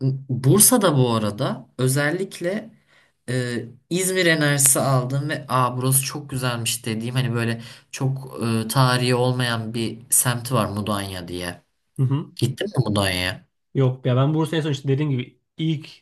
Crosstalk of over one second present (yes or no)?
no